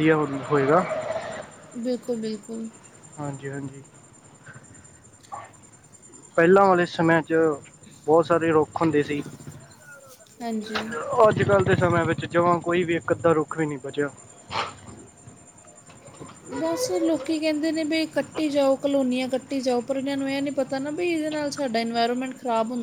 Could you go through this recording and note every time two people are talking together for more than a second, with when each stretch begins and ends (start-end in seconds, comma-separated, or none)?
none